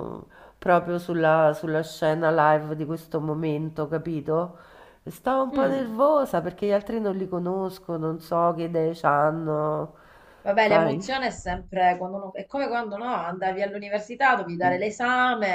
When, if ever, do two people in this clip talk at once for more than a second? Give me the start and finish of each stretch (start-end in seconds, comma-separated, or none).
none